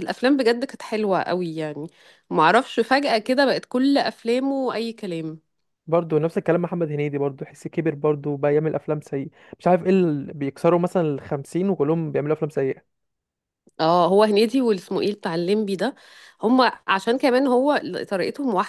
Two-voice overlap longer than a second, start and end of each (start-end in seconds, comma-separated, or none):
none